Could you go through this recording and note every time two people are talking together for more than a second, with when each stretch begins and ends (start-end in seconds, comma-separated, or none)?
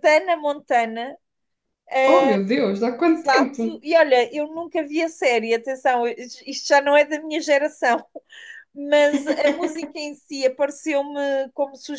none